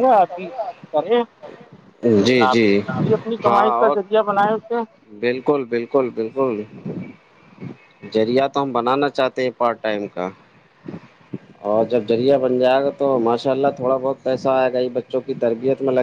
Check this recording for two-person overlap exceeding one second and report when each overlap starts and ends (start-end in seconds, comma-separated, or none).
none